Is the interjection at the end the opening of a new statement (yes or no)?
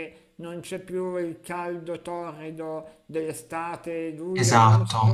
yes